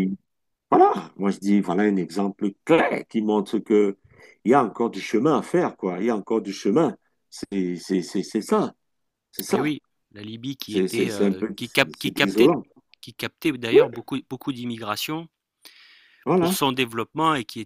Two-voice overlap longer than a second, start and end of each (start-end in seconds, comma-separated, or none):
10.7-12.5